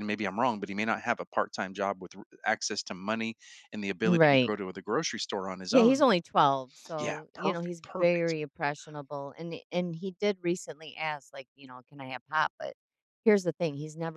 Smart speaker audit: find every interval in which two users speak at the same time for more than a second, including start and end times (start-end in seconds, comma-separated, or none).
7.0-8.3